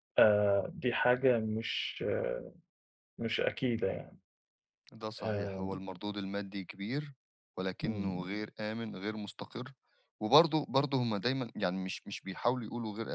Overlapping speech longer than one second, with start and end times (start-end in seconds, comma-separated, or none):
none